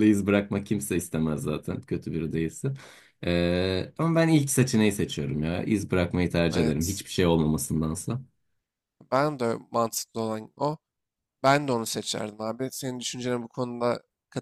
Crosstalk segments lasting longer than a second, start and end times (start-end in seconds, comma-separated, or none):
none